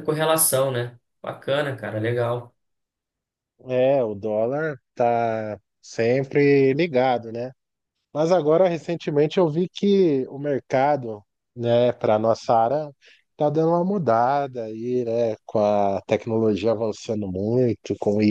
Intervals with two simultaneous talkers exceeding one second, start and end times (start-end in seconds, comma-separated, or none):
none